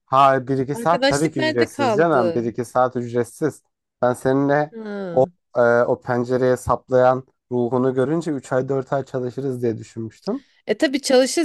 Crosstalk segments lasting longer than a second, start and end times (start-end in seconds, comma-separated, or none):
0.7-2.5